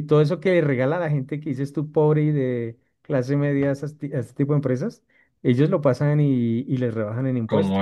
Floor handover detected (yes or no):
yes